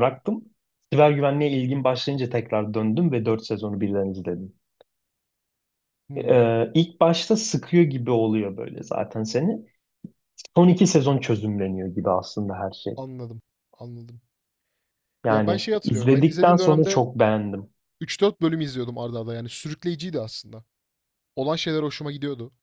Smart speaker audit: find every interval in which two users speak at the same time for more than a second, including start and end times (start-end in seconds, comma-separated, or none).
15.3-17.0